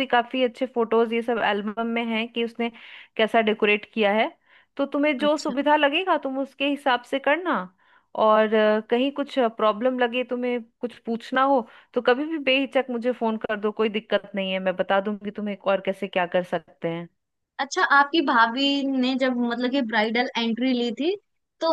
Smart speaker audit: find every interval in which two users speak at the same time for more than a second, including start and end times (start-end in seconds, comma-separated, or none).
none